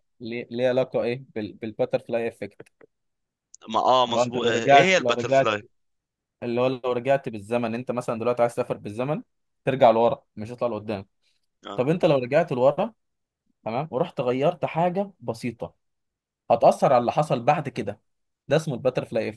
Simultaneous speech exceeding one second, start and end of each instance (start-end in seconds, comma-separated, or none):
4.1-5.5